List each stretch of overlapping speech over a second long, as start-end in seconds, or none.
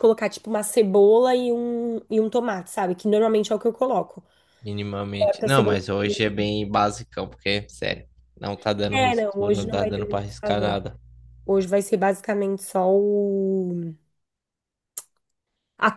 8.9-10.8